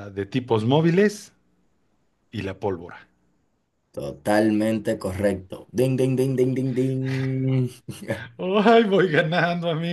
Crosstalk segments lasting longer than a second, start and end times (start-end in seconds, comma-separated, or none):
none